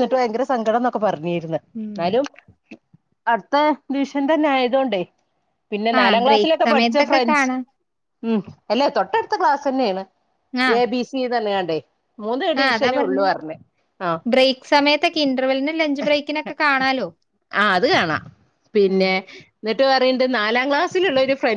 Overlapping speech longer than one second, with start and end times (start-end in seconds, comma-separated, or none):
6.0-7.5